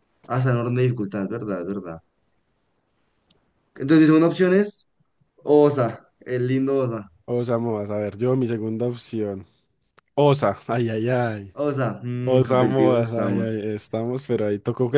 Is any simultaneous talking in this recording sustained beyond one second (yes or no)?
yes